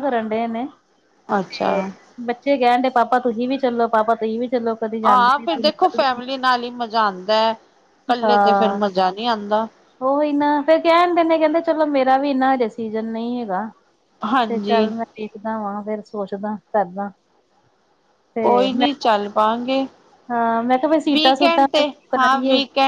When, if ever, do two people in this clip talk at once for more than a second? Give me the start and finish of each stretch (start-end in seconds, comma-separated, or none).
none